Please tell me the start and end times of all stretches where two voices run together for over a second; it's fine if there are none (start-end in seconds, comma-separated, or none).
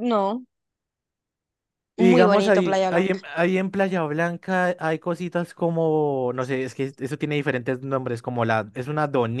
2.0-3.2